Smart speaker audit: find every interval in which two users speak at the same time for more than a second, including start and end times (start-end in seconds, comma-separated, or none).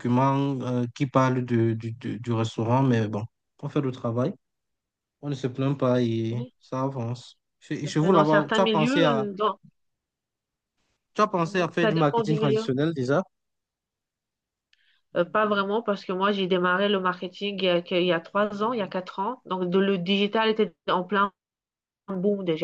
7.8-9.2, 11.4-12.7